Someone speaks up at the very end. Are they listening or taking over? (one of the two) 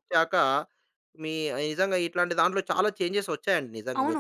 taking over